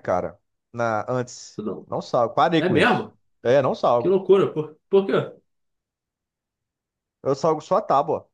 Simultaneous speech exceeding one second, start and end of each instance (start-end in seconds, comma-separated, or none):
none